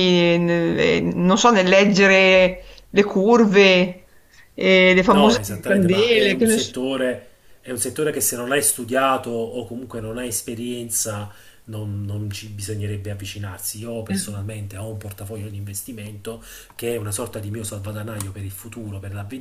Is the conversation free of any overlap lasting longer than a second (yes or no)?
no